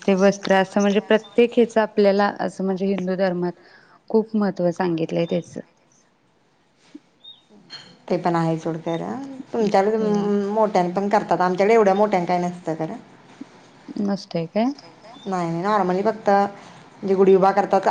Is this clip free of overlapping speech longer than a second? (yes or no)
yes